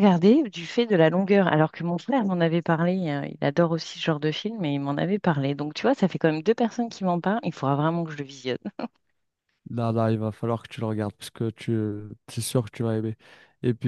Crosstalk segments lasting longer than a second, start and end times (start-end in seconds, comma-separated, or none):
none